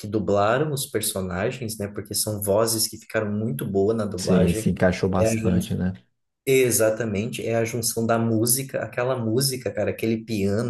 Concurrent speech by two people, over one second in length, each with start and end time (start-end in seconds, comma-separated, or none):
none